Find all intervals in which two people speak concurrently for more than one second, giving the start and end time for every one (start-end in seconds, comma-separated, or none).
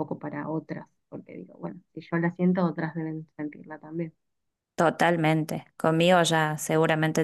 none